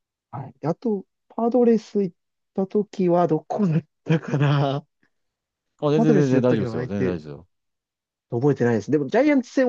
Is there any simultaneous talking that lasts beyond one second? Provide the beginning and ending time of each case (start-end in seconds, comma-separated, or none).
6.0-7.2